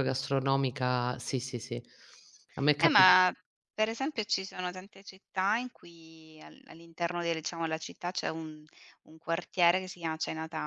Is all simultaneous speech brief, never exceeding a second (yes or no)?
yes